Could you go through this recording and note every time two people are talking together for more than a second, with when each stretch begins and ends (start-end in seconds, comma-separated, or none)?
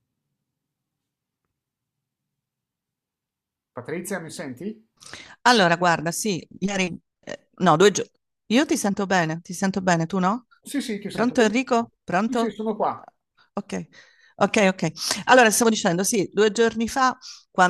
11.1-12.6